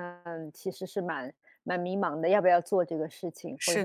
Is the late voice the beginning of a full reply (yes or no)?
no